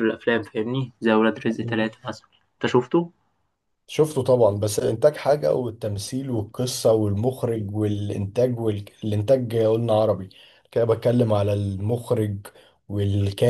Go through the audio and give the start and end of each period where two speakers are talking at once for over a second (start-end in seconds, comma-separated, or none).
none